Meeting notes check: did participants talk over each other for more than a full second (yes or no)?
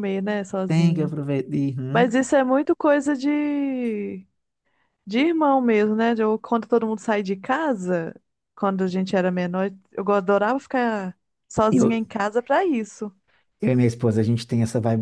no